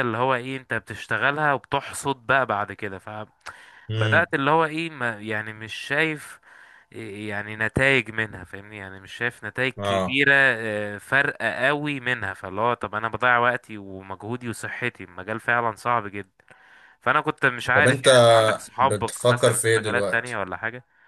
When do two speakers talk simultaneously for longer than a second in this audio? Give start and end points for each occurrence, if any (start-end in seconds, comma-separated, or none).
18.8-20.4